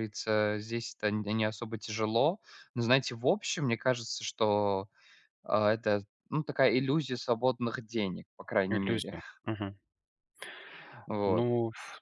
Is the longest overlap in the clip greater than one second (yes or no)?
no